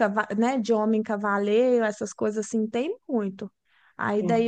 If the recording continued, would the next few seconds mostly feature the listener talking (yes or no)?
no